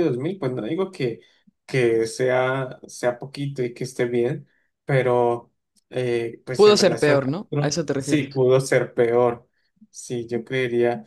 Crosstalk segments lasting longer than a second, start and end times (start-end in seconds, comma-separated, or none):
6.5-8.4